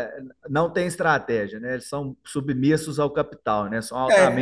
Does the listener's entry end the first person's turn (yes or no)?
yes